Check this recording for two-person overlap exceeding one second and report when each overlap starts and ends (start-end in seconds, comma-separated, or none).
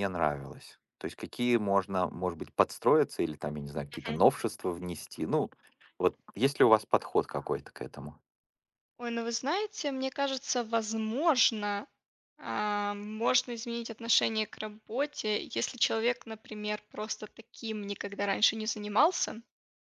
none